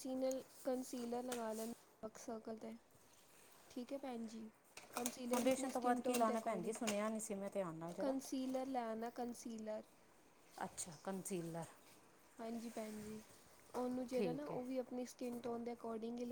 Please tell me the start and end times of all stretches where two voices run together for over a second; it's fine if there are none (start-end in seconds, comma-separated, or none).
5.3-6.8